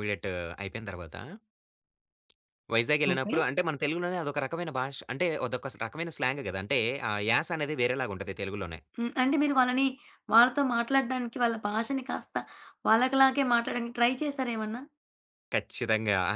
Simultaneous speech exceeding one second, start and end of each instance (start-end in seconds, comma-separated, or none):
none